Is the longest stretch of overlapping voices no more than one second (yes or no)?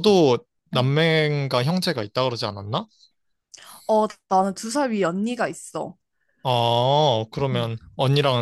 yes